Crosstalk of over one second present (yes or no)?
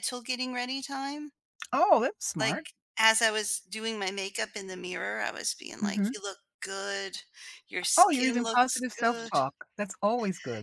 yes